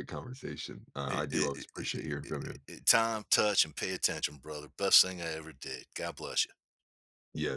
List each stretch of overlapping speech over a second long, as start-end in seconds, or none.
1.1-2.6